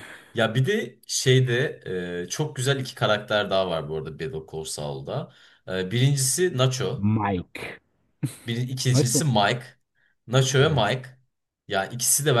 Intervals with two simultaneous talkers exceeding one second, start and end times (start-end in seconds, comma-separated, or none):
none